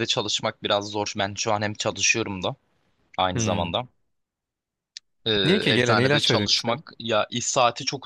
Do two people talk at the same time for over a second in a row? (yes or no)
yes